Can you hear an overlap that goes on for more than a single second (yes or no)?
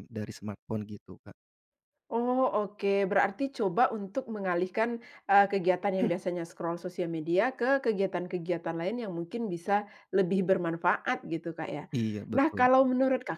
no